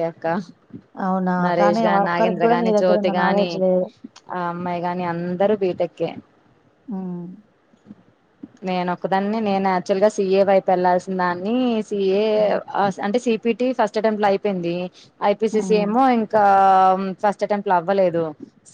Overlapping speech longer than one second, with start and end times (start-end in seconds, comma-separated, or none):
1.5-3.5